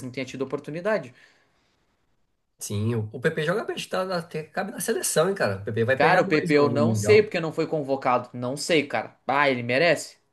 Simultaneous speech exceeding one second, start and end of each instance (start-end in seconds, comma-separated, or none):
5.9-7.3